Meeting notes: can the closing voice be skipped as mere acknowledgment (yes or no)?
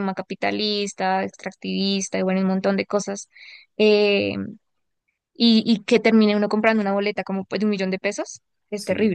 no